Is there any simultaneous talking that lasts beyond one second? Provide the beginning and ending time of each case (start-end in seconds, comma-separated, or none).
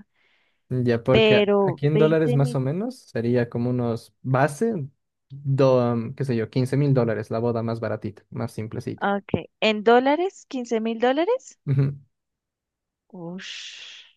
1.1-2.6